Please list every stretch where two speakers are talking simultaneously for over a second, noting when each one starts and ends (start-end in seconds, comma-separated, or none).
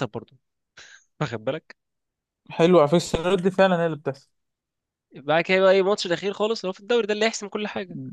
none